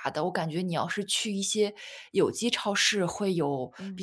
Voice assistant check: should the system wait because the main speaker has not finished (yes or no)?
yes